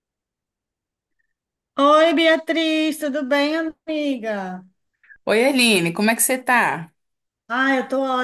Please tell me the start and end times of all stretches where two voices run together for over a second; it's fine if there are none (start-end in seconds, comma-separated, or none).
none